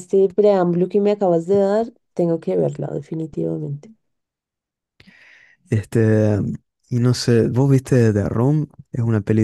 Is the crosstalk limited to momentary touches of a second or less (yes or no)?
yes